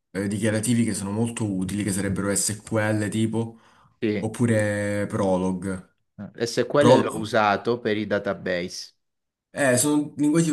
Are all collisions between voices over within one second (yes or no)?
yes